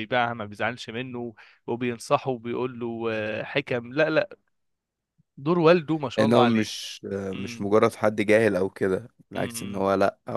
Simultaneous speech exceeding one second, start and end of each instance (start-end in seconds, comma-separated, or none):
none